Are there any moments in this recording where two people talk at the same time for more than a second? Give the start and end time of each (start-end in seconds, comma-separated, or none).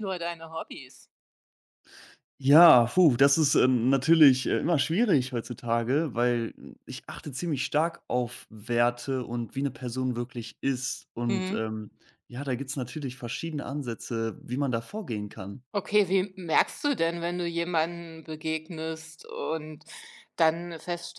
none